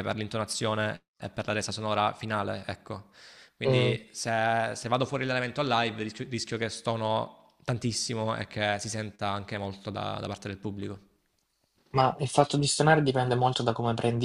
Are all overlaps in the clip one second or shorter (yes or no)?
yes